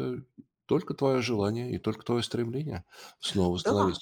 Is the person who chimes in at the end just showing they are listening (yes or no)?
yes